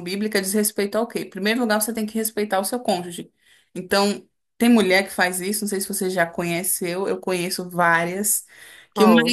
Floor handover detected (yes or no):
no